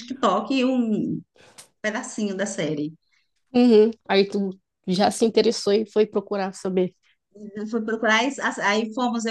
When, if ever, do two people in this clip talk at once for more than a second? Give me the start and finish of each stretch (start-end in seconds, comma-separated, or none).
none